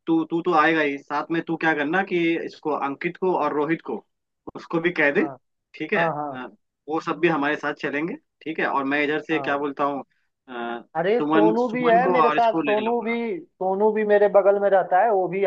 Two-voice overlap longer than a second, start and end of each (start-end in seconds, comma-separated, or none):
11.2-13.2